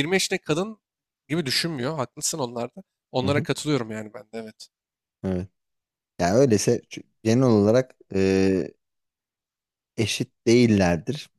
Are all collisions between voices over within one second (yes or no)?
yes